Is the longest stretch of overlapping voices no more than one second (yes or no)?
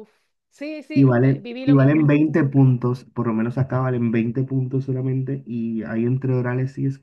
no